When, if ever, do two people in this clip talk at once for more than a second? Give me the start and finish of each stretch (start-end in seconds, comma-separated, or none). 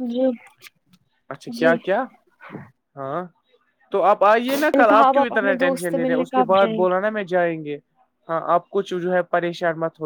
4.8-6.8